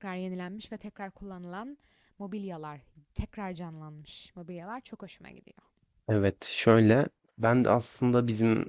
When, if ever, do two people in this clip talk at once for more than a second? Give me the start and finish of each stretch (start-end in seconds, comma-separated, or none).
none